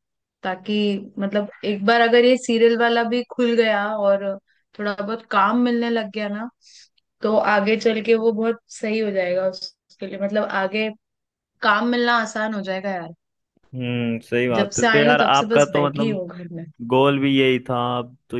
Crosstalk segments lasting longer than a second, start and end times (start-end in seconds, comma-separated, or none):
14.6-16.2